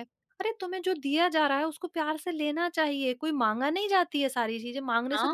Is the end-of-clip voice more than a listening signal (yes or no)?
yes